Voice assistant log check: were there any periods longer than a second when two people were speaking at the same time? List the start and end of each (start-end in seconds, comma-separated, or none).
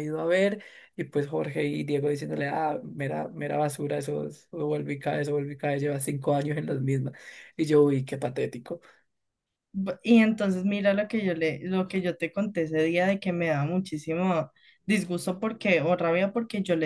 none